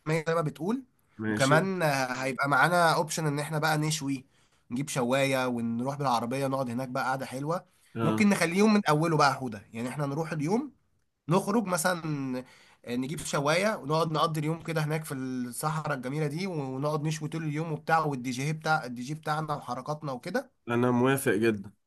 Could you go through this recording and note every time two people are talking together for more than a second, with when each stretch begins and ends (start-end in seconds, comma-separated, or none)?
none